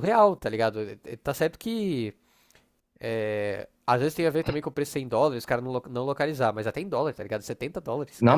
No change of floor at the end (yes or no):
no